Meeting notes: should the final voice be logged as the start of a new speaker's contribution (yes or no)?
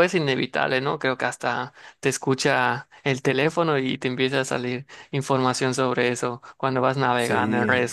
no